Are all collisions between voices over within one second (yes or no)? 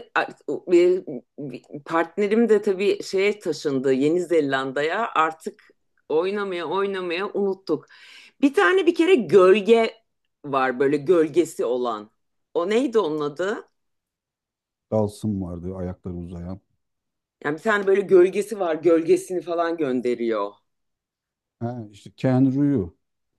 yes